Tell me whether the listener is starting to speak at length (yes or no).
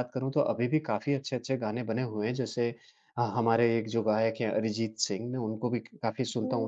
no